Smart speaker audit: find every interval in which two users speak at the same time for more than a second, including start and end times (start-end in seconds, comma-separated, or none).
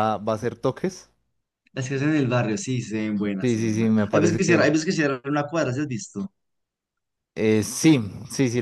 3.4-4.7